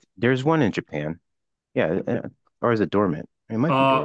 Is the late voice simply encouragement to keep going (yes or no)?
no